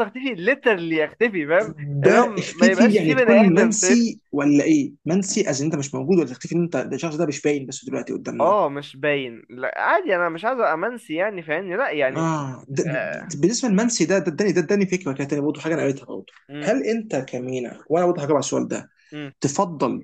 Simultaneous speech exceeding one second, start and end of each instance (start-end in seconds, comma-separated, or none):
2.0-4.2